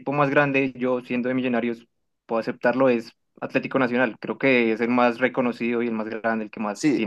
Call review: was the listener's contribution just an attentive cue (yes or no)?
no